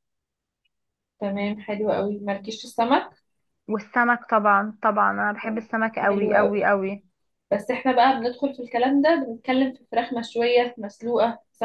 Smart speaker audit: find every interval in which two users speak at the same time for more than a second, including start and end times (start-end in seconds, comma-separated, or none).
5.4-6.7